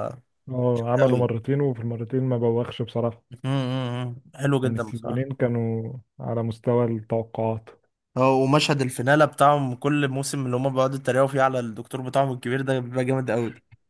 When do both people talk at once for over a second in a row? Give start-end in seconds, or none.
none